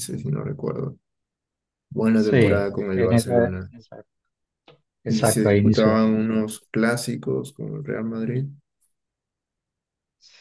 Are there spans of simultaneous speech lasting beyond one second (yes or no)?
yes